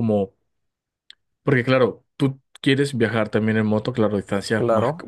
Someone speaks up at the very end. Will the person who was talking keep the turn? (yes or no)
yes